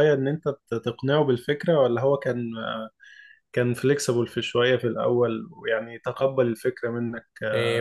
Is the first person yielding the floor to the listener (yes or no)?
yes